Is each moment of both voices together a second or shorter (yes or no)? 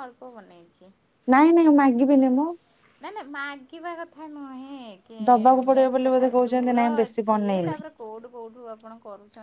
no